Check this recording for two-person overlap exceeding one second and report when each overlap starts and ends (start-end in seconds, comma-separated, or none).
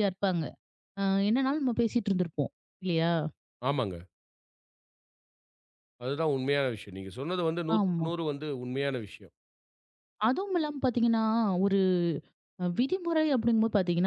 none